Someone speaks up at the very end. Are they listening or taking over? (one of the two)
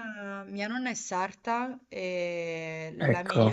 listening